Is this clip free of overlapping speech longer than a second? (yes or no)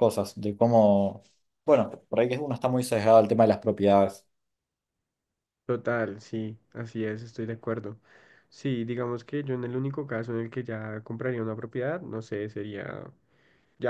yes